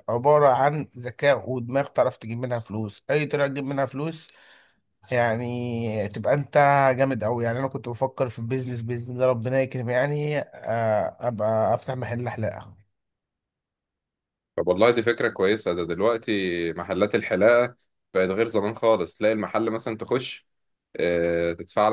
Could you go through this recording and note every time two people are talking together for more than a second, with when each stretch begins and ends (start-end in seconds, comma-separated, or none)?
none